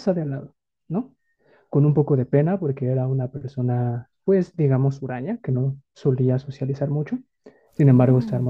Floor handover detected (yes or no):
no